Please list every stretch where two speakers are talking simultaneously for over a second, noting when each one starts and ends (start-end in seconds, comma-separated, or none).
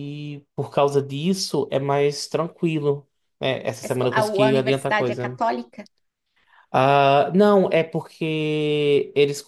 3.8-5.4